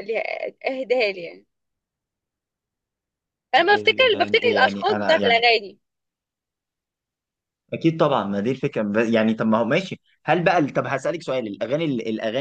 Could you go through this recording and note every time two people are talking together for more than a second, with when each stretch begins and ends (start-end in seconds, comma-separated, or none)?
3.6-5.4